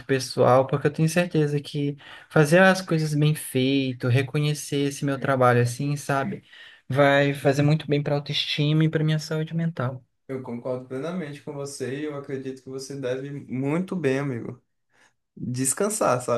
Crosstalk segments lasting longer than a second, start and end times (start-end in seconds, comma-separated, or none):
none